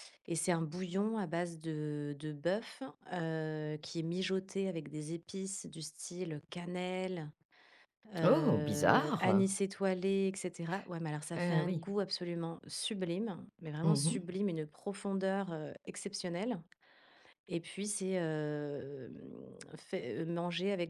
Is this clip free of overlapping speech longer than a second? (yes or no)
no